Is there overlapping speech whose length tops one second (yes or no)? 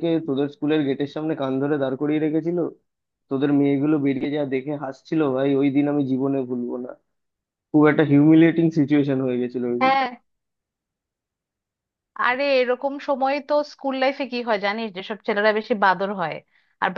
no